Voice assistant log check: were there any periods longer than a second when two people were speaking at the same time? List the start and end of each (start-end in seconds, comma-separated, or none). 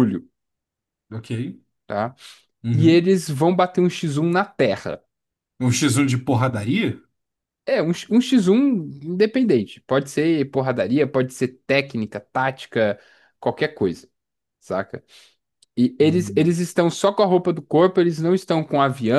none